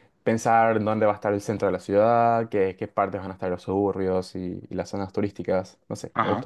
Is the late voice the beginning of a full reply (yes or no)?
yes